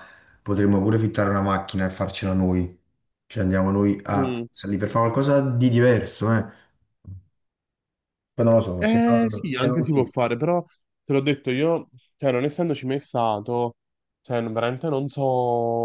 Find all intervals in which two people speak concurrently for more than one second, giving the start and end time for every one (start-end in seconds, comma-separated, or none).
8.8-10.1